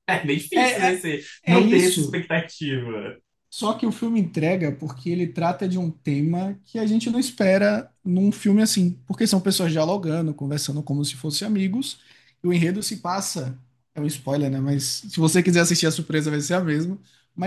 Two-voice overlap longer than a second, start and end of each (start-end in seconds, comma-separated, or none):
0.5-2.2